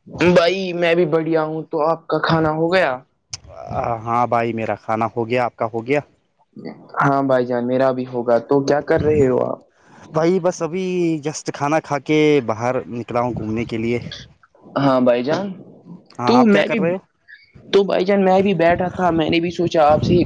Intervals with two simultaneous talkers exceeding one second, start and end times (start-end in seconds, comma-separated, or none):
none